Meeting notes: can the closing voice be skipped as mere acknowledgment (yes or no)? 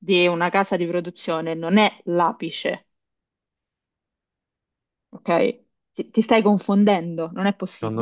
no